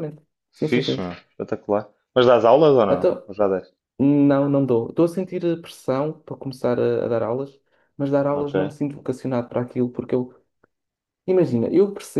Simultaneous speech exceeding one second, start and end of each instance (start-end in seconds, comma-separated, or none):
none